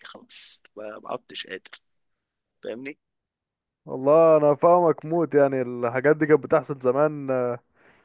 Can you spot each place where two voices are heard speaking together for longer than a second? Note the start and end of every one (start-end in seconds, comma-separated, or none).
none